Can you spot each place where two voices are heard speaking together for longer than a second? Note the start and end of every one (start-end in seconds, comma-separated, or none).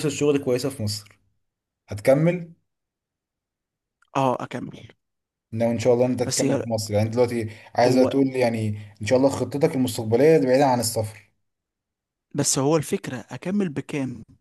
none